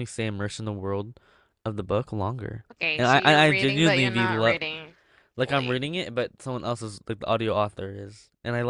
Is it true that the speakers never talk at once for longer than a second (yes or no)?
no